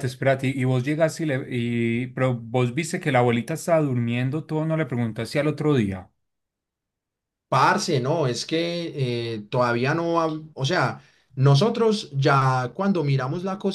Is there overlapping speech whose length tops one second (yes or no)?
no